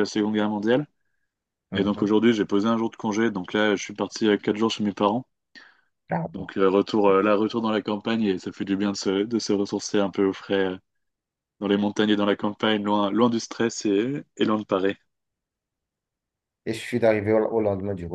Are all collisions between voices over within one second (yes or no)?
yes